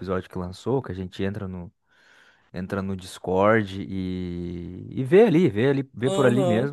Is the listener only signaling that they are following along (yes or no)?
yes